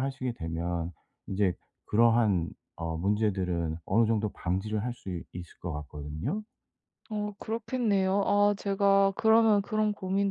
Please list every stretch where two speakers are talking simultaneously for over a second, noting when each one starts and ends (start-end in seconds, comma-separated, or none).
none